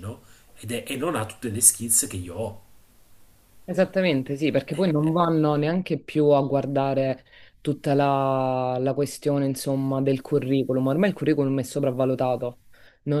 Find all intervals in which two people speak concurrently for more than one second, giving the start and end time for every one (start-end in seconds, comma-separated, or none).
none